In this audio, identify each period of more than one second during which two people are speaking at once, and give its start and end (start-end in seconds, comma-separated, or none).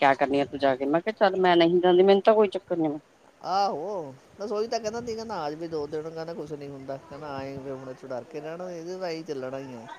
none